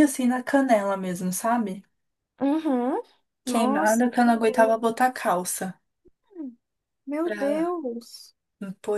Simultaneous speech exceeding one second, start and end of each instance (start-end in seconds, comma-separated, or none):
3.5-4.8